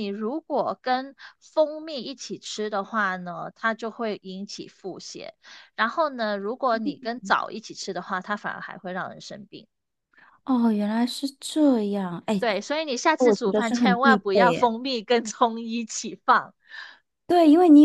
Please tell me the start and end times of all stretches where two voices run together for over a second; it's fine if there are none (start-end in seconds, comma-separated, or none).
13.2-14.7